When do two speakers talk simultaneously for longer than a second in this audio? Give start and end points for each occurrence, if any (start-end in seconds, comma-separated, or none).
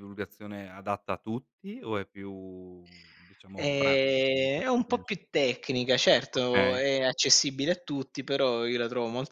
3.6-5.2